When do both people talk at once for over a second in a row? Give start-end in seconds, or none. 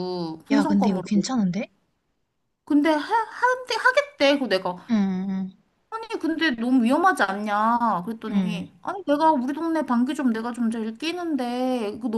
none